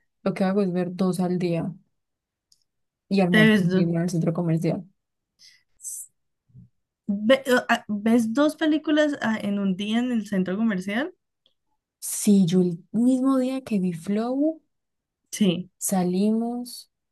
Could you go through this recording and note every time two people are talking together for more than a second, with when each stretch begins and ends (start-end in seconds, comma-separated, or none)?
none